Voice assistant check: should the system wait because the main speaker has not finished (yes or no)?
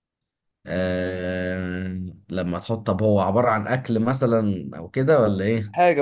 no